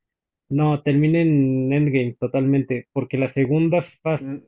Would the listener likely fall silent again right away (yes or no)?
no